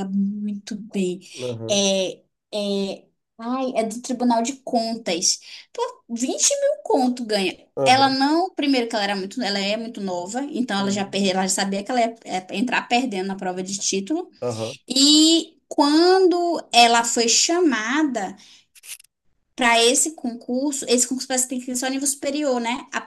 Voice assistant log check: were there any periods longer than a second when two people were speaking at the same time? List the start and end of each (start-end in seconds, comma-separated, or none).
none